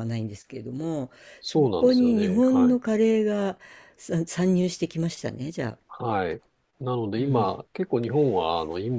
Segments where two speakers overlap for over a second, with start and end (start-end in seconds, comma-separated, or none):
1.4-2.8